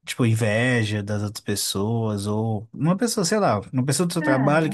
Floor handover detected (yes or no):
no